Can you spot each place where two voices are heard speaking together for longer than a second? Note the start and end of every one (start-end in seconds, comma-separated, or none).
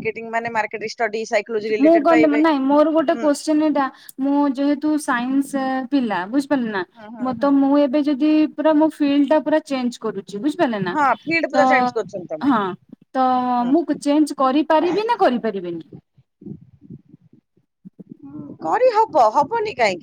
none